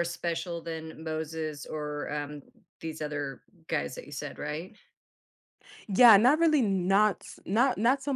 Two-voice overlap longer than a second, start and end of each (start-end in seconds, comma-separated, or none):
none